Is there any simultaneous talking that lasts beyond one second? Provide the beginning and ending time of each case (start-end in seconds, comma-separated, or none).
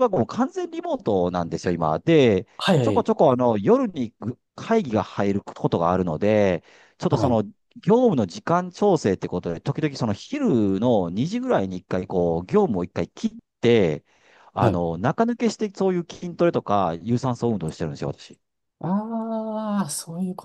none